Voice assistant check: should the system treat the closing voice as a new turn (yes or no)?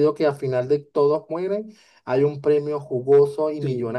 yes